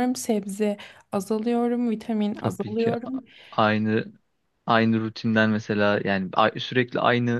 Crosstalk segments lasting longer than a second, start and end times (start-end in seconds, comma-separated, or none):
none